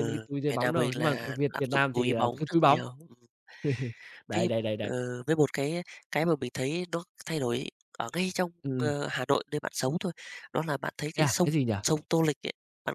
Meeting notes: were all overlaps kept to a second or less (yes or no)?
no